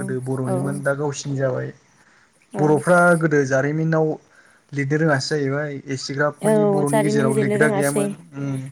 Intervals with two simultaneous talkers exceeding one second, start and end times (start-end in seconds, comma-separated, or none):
6.4-8.0